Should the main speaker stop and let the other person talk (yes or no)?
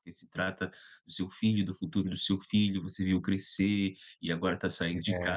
no